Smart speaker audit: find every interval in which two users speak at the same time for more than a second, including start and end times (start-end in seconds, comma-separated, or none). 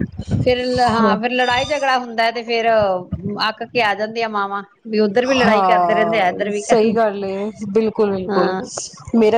5.4-6.9